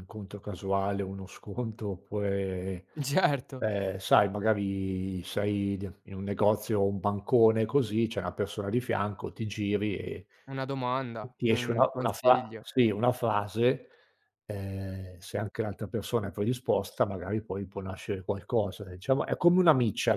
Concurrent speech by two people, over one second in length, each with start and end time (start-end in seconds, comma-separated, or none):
11.3-12.6